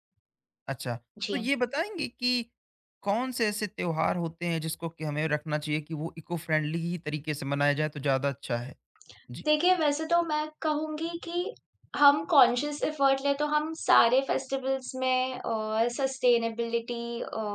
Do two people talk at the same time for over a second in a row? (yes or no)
no